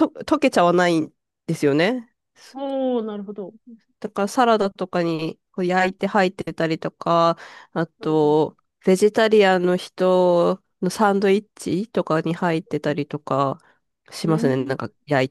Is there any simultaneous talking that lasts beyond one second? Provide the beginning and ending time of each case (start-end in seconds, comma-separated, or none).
none